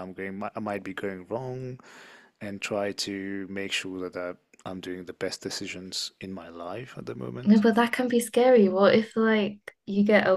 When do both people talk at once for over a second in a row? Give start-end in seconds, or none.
none